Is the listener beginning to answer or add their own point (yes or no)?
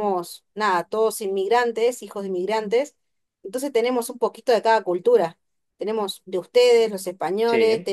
no